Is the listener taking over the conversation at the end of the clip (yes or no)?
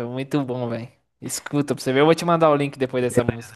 yes